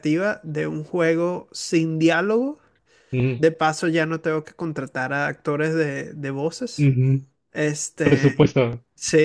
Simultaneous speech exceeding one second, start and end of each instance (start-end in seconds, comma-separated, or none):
none